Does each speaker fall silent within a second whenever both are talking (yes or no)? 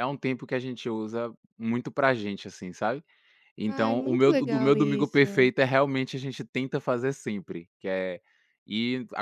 no